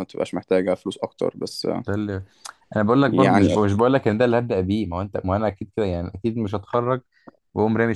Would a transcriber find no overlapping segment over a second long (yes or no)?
yes